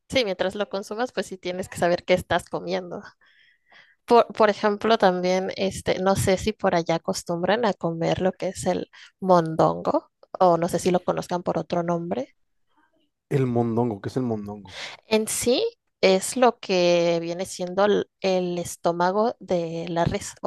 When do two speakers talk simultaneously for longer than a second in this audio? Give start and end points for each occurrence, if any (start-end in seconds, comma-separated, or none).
none